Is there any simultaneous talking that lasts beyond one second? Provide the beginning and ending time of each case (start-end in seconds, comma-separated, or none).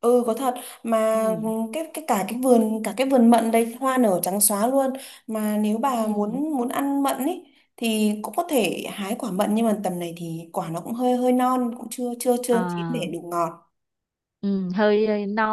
none